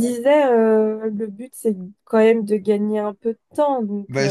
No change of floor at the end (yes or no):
no